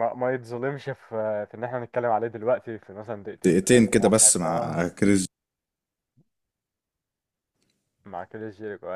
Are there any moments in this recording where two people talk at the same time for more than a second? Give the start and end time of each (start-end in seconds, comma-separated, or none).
3.5-4.8